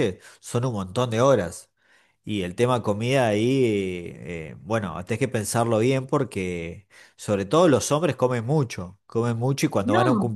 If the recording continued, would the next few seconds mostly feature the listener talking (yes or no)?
yes